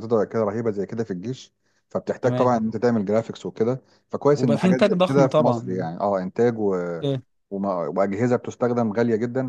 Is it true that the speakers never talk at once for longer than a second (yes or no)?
no